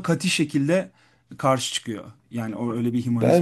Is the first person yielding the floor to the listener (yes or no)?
yes